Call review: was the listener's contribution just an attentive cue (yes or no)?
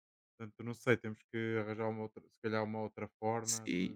no